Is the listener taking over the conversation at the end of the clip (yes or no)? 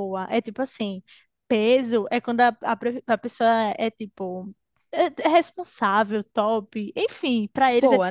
no